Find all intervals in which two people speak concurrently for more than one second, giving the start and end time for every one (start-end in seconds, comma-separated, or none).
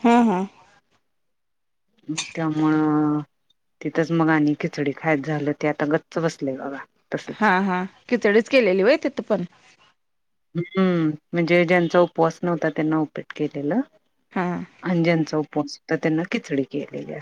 none